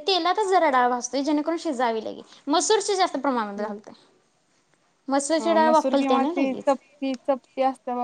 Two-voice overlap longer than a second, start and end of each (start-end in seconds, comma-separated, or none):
5.4-6.8